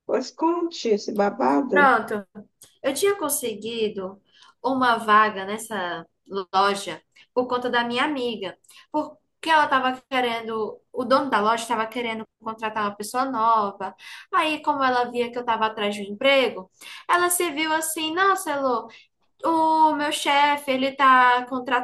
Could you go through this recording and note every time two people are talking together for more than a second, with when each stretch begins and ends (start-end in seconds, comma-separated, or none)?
none